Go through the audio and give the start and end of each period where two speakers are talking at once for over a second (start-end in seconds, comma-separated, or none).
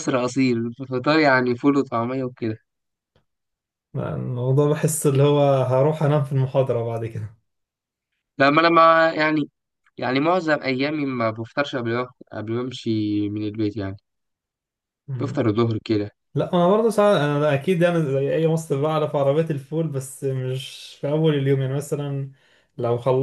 none